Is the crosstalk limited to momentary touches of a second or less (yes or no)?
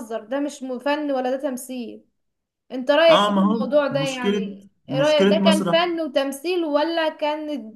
no